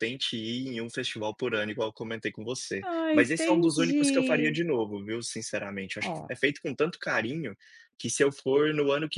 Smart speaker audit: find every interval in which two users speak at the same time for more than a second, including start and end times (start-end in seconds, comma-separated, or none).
2.9-4.6